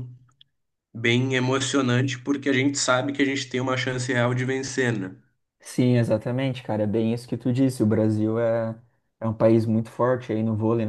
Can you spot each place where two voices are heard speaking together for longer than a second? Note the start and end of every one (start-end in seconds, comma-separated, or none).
none